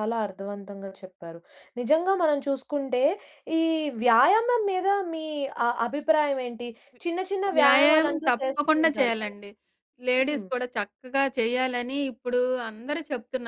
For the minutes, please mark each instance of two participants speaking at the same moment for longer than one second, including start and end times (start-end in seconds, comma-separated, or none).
7.6-9.3